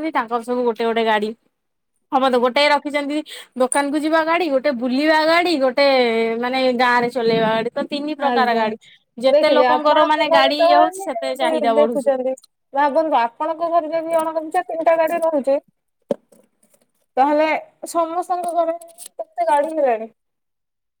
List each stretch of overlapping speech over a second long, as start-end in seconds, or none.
9.3-12.1